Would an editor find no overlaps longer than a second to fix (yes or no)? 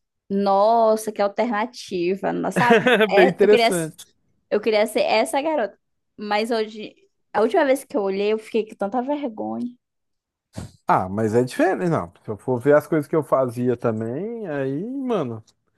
yes